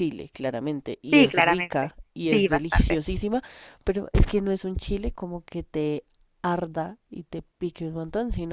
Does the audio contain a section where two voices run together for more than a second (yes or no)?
yes